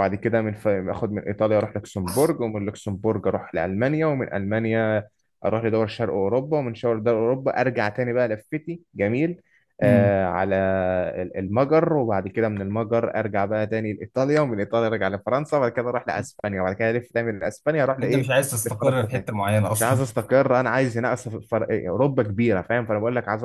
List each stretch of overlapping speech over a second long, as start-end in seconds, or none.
18.0-20.0